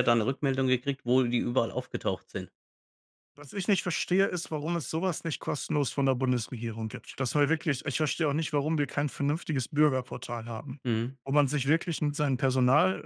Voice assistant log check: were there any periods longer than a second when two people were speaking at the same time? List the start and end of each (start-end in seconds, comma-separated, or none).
none